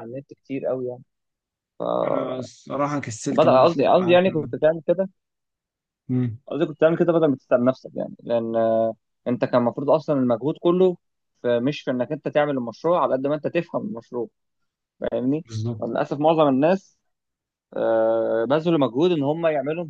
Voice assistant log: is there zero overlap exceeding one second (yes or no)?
no